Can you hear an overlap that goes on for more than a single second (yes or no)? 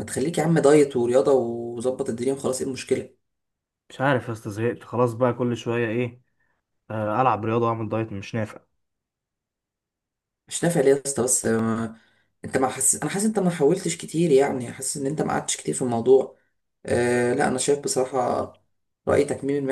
no